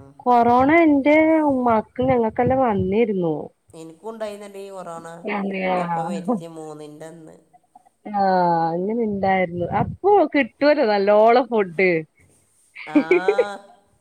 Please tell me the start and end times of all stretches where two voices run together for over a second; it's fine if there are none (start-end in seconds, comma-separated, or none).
none